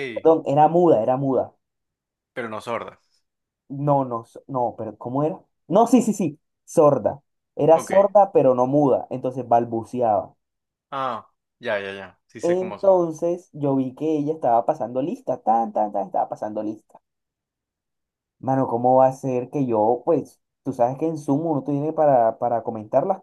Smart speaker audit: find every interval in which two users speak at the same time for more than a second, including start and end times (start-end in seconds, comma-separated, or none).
none